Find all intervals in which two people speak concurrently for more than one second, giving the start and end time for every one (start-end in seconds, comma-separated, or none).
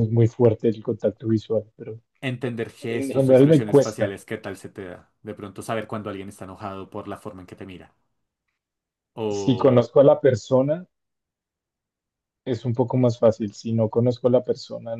2.9-4.2